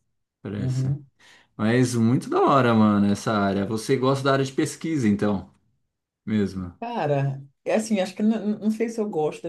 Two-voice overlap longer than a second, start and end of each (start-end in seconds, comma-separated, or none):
none